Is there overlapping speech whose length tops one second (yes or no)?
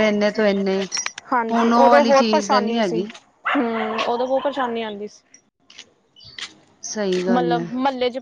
yes